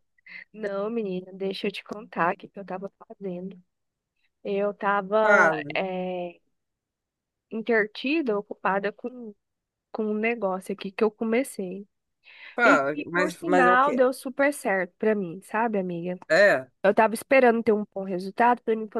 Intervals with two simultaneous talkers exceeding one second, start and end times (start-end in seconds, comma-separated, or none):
12.6-14.1